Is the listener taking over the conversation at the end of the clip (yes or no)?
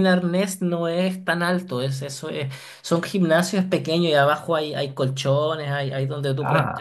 no